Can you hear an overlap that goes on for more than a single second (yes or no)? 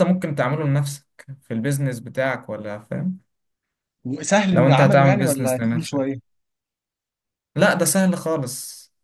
yes